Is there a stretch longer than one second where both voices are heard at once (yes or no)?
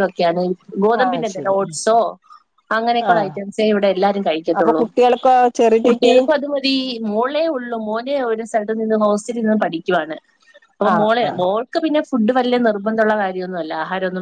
no